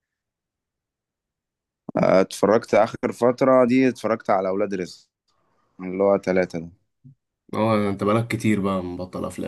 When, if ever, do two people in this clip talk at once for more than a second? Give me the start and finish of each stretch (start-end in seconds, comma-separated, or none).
none